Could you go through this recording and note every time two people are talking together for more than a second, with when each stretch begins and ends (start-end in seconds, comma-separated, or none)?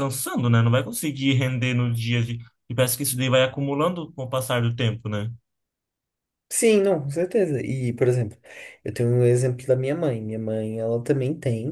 none